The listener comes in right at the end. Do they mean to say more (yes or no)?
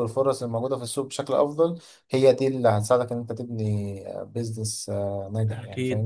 yes